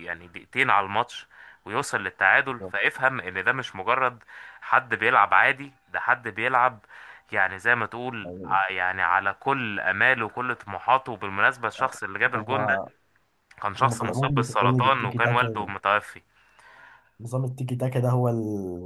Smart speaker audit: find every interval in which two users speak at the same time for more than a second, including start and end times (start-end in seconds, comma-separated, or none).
13.8-15.7